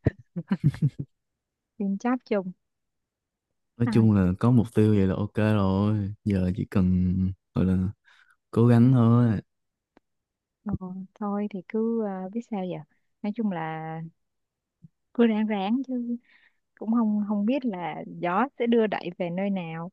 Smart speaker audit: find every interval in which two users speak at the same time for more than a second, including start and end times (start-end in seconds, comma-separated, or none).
none